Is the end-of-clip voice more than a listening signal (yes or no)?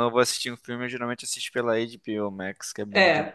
yes